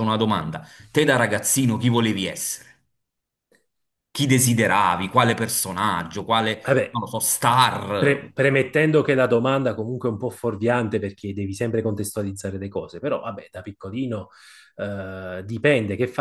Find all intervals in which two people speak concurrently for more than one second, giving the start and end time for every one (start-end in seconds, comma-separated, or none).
none